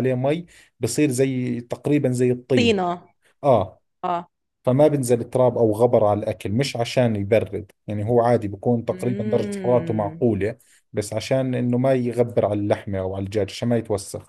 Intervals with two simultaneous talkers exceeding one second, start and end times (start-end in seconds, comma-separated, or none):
8.9-10.2